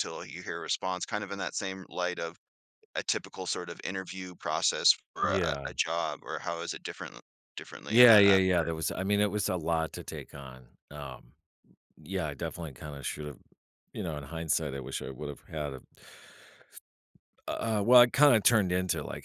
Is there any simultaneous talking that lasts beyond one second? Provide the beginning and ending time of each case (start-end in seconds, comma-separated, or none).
none